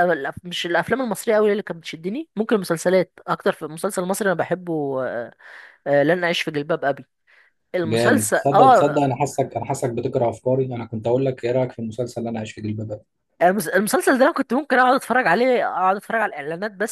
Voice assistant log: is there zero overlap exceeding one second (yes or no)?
no